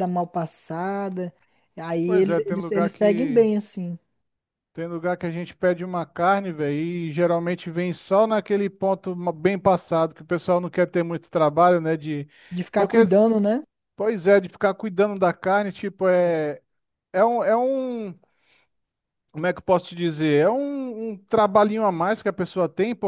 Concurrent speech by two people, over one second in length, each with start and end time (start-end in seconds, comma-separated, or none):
2.0-3.5